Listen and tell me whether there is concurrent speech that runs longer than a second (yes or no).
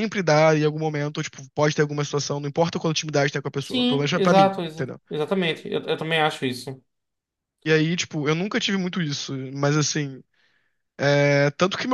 yes